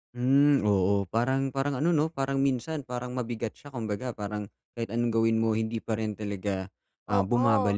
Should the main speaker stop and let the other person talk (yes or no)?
yes